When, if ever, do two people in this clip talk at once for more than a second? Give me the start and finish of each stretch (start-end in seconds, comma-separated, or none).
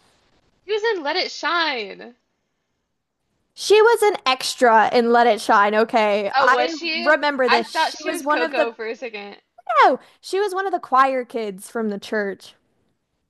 6.4-8.7